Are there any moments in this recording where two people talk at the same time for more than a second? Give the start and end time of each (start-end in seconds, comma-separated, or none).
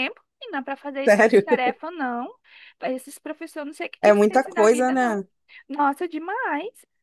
4.0-5.2